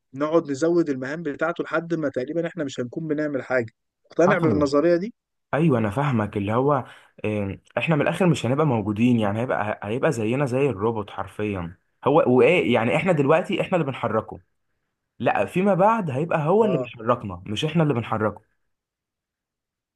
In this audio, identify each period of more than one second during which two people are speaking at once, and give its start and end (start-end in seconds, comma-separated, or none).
none